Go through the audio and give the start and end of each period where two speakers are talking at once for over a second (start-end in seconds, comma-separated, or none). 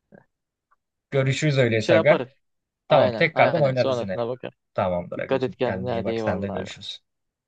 2.9-4.2, 5.2-6.7